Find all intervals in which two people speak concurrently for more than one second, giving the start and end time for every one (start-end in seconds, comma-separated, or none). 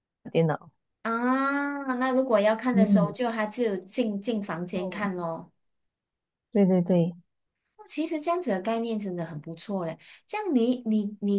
none